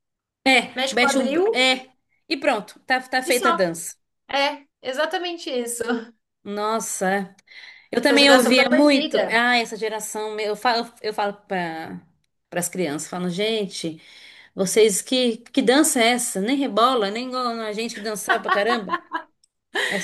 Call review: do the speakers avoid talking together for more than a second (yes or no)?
no